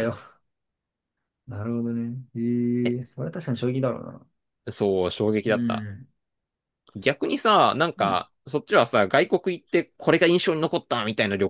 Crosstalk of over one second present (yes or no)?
no